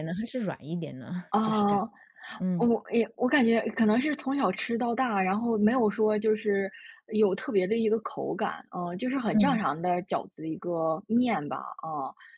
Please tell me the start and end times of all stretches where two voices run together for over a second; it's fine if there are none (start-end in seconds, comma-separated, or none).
none